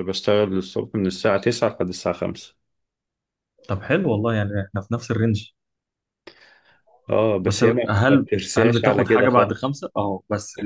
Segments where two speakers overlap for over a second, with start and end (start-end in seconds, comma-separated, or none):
7.4-9.7